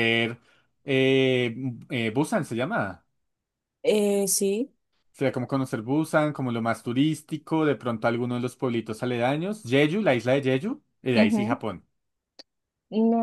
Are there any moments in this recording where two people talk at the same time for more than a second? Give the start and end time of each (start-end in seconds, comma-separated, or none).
none